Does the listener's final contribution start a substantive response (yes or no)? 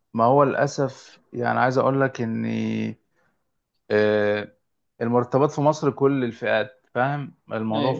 yes